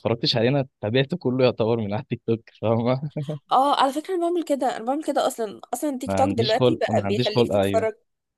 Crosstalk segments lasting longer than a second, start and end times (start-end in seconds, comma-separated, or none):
6.1-7.9